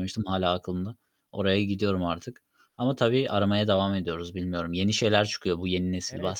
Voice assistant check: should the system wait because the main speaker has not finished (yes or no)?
no